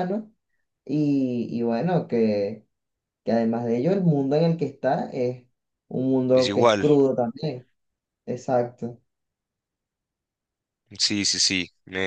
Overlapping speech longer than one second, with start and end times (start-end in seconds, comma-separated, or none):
none